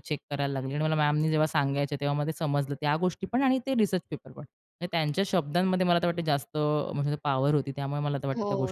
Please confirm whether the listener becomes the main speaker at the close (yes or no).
yes